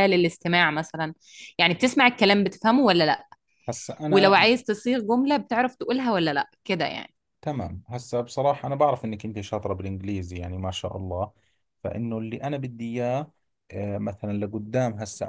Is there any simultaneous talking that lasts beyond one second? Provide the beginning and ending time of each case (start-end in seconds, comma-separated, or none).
none